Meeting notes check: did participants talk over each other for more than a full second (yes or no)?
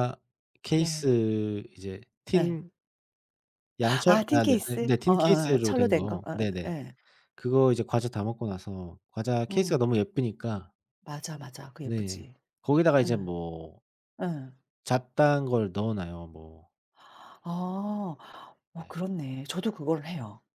yes